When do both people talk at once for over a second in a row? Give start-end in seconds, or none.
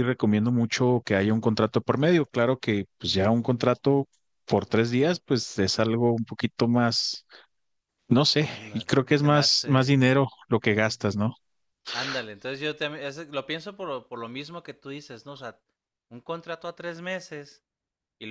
8.4-10.1